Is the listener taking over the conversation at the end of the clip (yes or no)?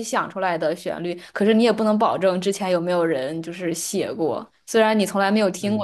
no